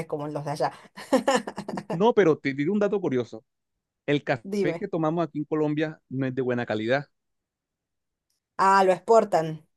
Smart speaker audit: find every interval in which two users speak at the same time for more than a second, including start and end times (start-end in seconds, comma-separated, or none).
none